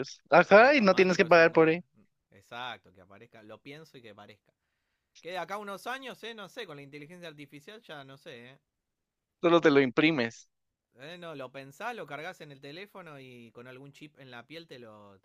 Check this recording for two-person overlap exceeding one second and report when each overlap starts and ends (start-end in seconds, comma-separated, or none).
0.5-1.7